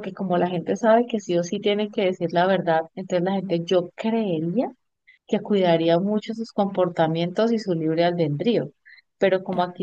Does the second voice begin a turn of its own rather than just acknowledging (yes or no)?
no